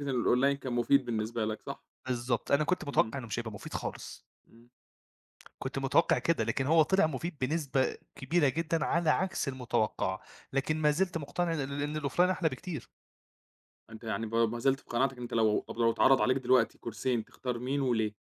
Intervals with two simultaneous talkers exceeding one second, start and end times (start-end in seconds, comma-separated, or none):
none